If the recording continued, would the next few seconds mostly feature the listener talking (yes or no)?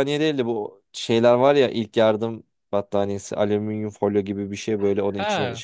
no